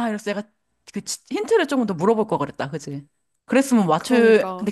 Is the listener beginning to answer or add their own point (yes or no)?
yes